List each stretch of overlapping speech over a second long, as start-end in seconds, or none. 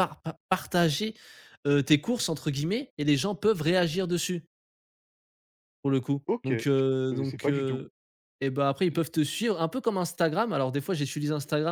6.2-7.8